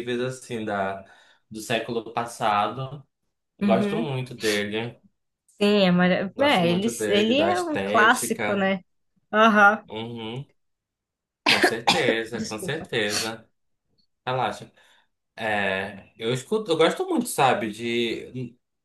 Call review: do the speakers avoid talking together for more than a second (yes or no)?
no